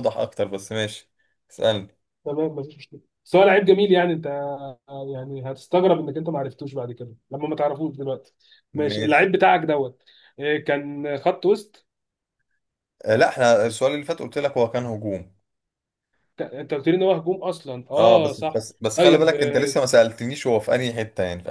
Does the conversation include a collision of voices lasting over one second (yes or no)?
yes